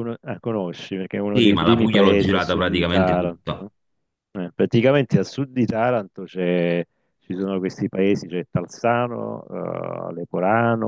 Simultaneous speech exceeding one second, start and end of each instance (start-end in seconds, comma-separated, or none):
1.3-3.6